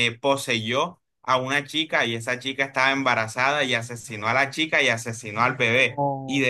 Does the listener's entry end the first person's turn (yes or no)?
no